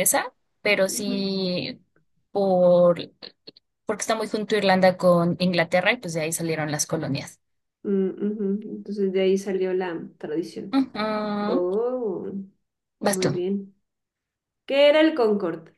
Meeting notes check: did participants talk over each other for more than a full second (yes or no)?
no